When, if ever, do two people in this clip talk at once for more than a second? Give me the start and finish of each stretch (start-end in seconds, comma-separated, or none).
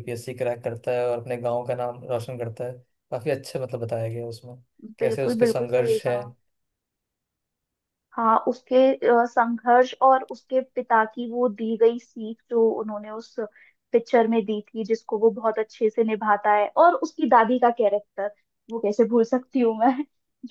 5.0-6.2